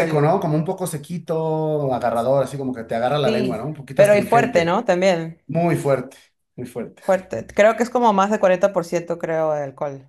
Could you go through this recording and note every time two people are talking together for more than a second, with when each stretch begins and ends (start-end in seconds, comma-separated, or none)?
3.2-4.8